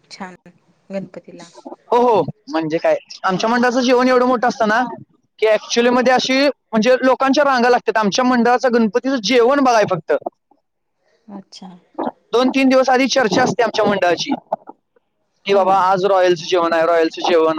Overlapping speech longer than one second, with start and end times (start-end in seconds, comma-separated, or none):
none